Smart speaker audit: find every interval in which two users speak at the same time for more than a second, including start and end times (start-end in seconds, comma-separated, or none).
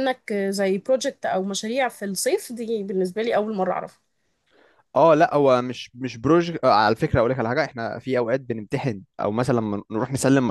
none